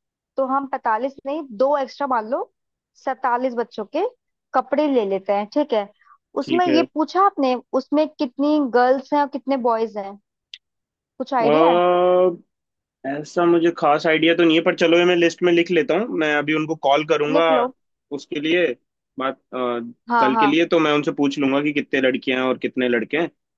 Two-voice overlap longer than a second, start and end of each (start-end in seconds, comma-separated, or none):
none